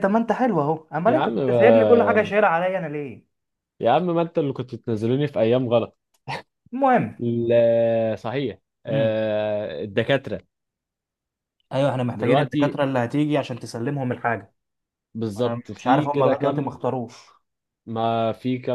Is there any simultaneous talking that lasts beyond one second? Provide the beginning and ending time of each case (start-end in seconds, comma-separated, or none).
1.1-2.3, 15.4-16.7